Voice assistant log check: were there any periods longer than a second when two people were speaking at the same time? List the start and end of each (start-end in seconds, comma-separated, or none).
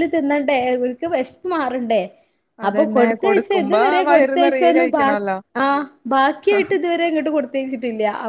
2.7-5.0